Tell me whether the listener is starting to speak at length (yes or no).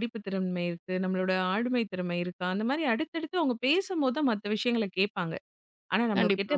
no